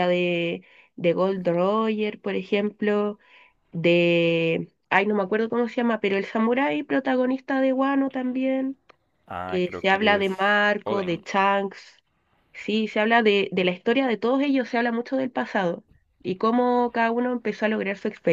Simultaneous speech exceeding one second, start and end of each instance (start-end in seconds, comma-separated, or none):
9.5-11.2